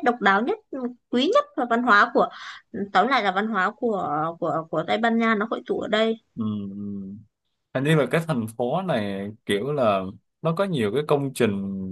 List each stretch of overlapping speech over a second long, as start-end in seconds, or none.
none